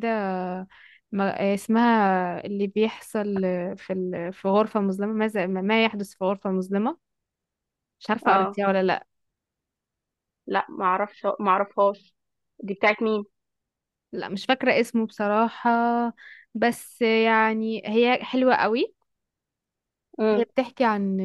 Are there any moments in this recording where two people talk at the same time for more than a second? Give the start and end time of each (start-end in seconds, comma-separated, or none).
none